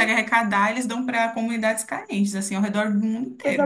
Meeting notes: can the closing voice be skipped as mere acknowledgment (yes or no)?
no